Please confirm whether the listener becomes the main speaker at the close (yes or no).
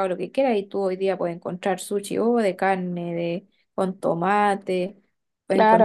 yes